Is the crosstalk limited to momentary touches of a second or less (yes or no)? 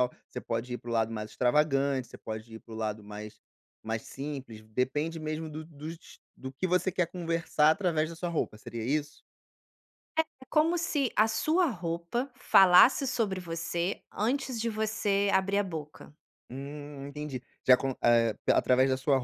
yes